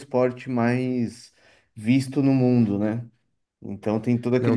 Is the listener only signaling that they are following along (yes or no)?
no